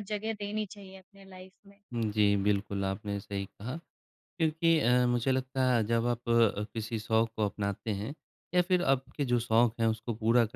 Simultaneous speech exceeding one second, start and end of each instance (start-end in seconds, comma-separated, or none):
none